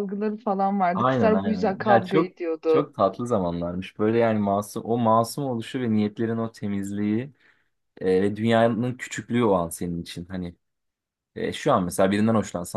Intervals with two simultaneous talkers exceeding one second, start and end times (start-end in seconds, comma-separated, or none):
0.9-2.9